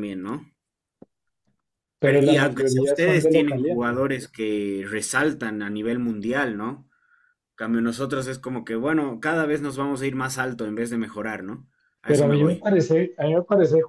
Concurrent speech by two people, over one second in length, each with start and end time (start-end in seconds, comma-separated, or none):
2.0-4.0